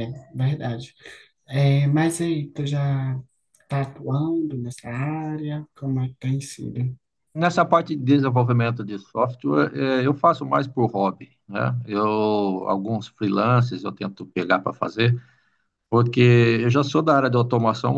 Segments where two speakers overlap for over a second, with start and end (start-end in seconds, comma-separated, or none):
none